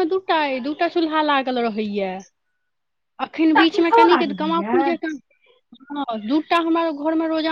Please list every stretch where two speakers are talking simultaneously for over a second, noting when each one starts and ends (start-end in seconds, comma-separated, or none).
3.4-4.9